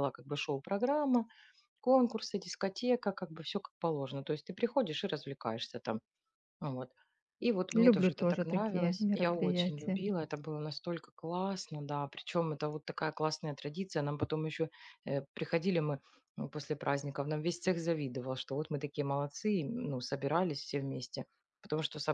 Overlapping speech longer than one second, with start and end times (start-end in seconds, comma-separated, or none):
7.7-10.0